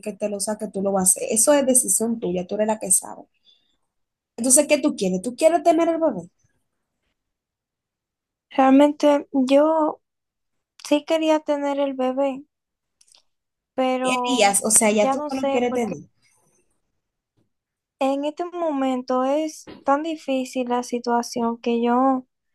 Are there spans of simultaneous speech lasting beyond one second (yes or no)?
yes